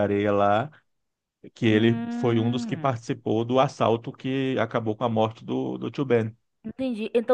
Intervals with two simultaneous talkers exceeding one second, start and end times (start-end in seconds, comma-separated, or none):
1.7-3.0